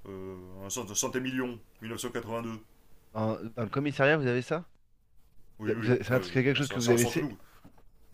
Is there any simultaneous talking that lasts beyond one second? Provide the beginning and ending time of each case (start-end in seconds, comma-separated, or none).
5.6-7.3